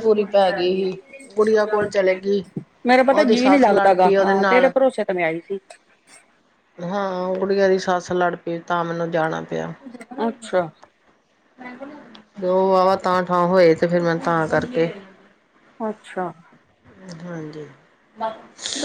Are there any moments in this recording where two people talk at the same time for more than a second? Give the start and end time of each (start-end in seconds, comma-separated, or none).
3.1-4.7